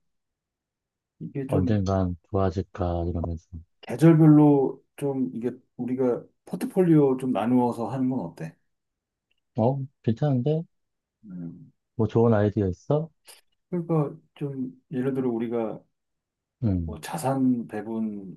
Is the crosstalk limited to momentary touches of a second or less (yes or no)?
yes